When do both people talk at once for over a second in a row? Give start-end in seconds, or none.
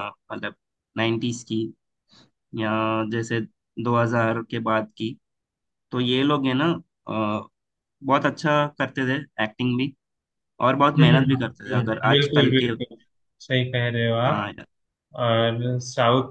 10.8-12.7